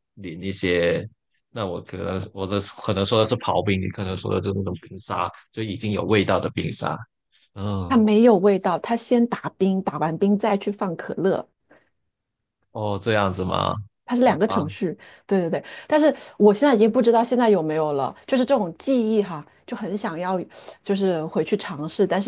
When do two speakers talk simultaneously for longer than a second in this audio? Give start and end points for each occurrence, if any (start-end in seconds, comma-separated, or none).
none